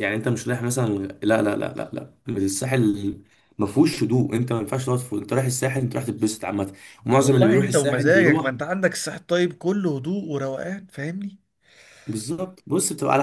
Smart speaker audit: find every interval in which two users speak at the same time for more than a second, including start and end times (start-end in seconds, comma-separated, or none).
7.2-8.5